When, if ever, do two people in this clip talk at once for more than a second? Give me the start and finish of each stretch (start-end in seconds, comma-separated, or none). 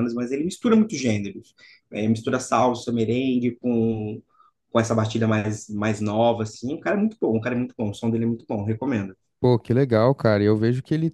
none